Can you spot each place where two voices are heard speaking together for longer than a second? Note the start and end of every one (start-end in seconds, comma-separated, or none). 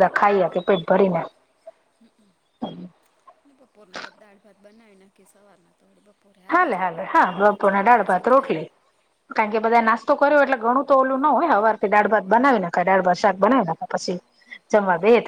6.6-8.5